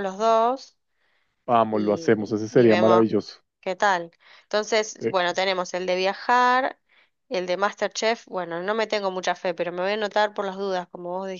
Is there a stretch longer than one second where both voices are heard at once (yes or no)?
yes